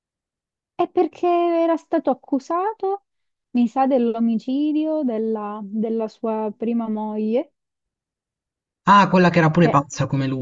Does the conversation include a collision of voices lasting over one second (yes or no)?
no